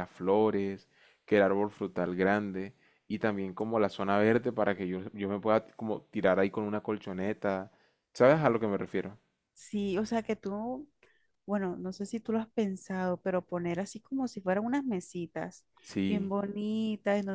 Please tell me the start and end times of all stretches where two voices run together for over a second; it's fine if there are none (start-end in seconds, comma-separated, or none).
none